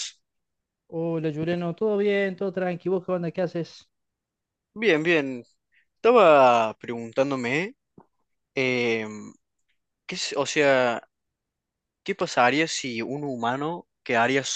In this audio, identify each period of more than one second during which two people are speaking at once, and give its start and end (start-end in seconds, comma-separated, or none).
none